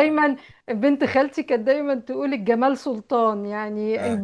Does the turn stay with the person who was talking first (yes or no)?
yes